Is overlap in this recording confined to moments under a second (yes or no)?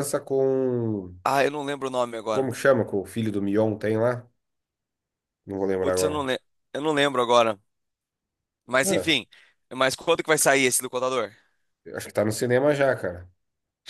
yes